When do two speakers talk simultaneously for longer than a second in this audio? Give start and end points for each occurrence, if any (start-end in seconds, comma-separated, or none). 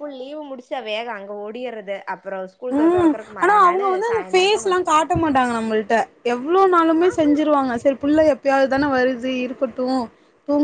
2.8-5.1